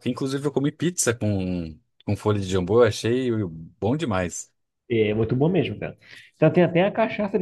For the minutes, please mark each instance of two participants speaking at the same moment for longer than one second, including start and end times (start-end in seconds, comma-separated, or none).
none